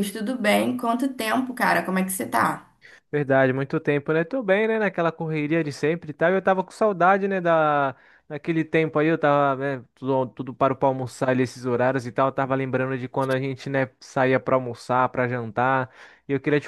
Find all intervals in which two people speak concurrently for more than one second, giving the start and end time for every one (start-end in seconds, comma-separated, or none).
none